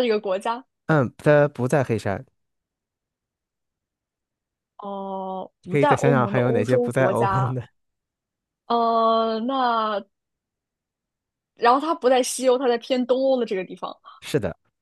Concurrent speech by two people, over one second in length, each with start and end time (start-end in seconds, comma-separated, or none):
5.7-7.5